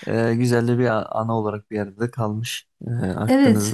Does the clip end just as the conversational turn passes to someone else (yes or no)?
yes